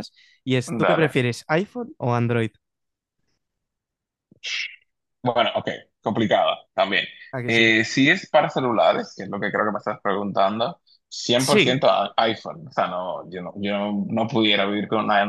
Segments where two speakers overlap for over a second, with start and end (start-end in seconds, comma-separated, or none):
none